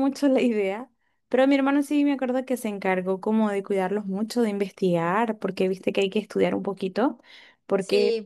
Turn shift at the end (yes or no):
yes